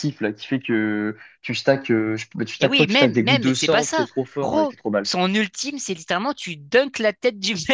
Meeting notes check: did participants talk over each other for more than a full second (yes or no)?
yes